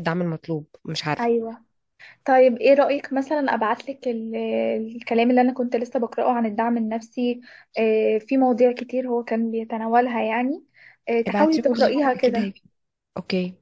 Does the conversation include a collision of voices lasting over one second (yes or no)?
yes